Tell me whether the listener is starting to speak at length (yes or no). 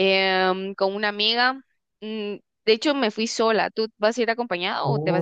yes